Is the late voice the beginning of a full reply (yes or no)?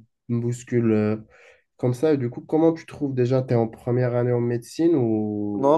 yes